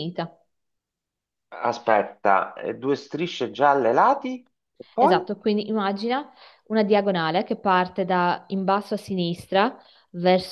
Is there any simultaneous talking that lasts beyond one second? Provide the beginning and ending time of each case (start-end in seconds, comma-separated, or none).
none